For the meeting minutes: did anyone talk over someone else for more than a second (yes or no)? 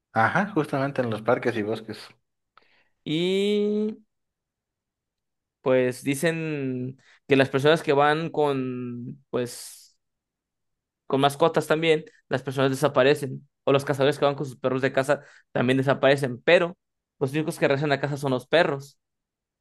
no